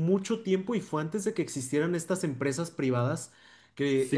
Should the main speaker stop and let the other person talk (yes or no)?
yes